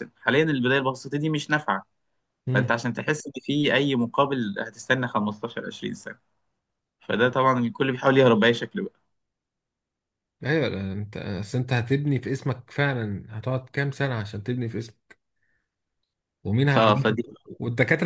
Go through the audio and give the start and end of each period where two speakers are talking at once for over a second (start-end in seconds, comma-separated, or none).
none